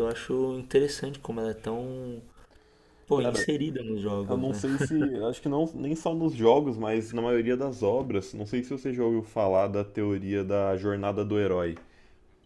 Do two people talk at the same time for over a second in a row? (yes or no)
no